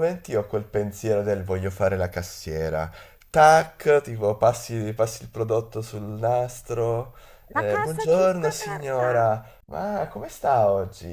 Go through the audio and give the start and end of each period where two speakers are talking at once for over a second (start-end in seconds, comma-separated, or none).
7.5-9.3